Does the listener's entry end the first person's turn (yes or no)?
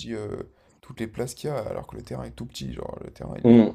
yes